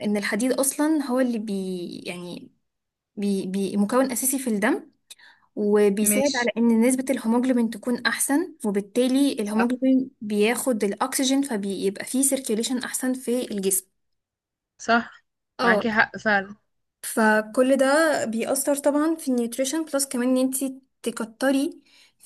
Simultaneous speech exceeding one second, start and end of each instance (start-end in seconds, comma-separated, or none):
none